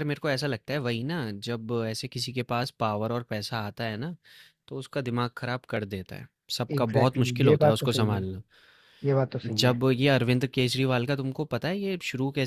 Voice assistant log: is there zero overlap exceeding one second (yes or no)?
no